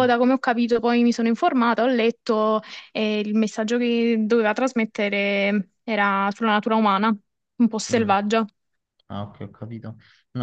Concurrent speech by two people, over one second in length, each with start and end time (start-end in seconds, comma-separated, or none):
none